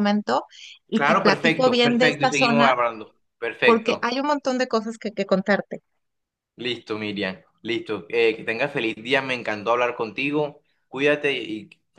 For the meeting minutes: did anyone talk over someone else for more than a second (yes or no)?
yes